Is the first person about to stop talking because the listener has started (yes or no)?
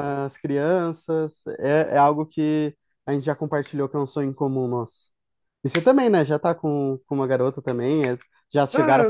yes